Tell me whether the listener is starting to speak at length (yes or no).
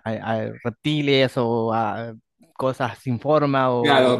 yes